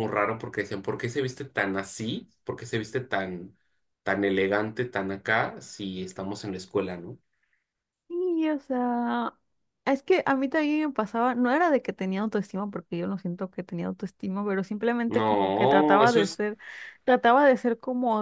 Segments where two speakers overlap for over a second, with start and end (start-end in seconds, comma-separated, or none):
15.1-16.4